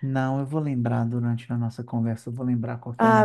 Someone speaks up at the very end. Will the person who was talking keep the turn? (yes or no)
no